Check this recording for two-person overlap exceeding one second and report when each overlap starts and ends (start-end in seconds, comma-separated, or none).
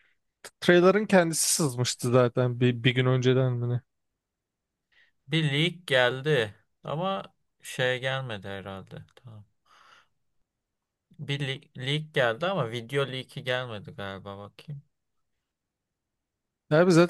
none